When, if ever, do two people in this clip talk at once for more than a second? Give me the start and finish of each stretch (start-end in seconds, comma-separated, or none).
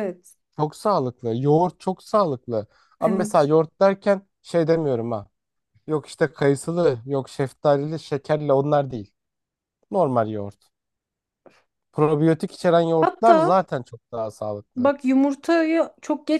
none